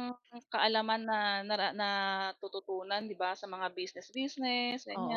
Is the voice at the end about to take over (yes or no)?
yes